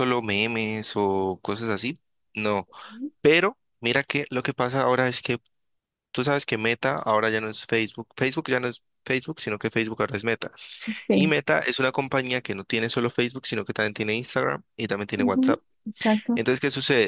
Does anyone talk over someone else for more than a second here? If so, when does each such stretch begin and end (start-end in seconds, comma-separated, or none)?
none